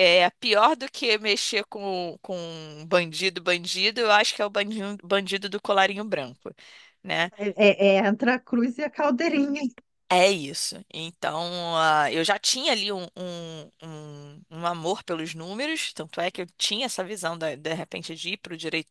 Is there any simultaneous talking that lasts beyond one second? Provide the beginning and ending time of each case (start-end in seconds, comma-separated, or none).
none